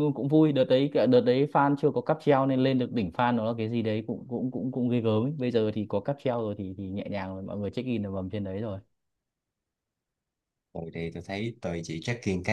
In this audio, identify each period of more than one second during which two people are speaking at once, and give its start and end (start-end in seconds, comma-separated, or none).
none